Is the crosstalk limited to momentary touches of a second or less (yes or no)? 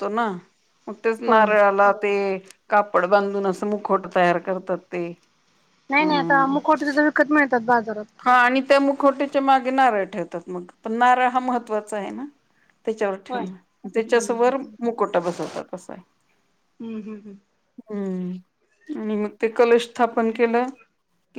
yes